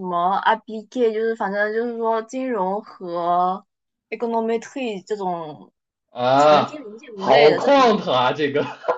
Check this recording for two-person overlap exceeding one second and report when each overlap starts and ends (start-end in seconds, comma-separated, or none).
6.5-7.9